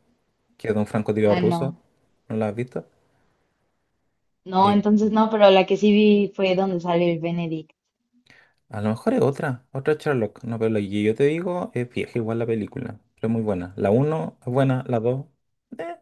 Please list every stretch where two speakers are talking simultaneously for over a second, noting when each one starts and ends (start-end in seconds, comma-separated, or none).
none